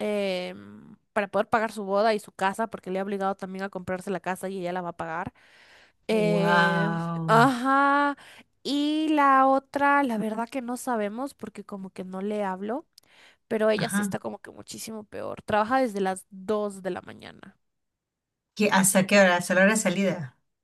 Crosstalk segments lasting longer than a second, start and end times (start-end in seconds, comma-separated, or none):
6.1-7.5